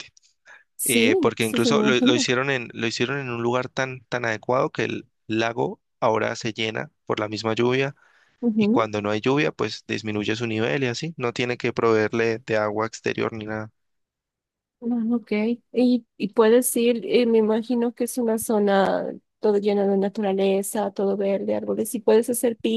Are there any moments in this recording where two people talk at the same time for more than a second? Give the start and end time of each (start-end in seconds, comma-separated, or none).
0.8-2.3